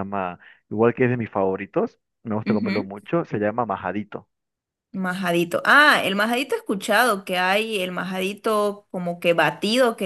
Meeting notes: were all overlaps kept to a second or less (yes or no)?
yes